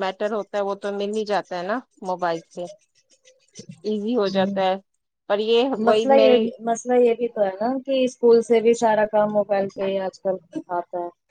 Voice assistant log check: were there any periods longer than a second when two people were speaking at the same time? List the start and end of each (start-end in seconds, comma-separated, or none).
none